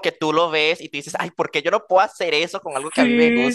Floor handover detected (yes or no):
yes